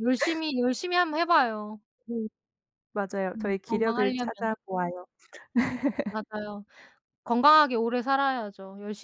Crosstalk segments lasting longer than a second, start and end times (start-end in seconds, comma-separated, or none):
3.3-4.5